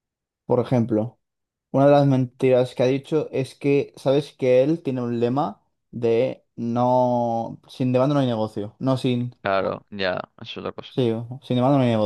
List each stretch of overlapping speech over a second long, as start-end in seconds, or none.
none